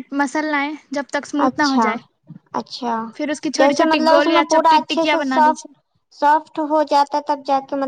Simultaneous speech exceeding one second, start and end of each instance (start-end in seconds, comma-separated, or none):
3.6-5.7